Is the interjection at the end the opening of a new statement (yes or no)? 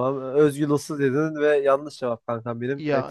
no